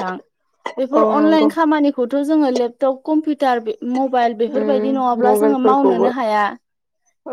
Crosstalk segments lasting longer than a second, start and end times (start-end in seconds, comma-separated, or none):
4.5-6.1